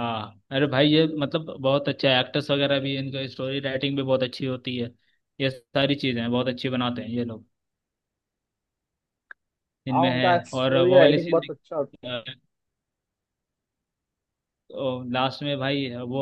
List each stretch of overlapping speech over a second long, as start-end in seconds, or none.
9.9-11.5